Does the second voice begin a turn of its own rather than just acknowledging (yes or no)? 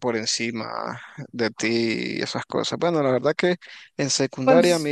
no